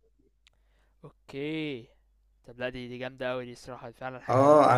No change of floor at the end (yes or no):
no